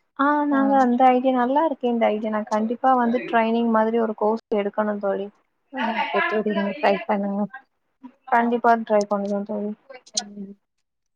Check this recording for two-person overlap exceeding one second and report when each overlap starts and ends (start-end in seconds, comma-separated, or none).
none